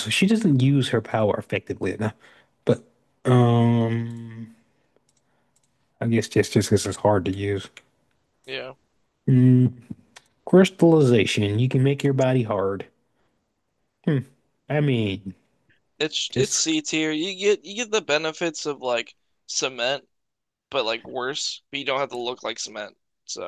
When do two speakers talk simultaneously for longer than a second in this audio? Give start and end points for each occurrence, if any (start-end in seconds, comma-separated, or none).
none